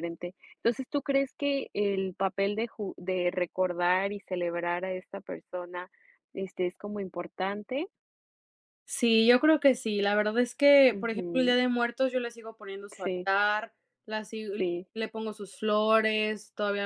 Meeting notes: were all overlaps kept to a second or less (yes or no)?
yes